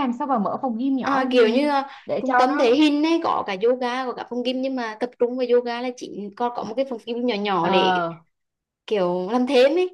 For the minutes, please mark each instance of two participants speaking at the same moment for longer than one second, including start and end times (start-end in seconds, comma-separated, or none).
1.0-2.8